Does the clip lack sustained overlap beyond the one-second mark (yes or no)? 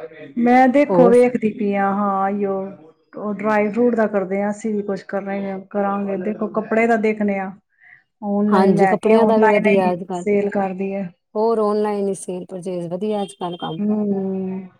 no